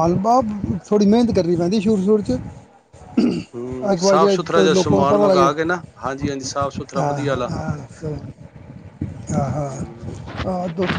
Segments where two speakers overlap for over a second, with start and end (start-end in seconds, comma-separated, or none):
3.9-5.5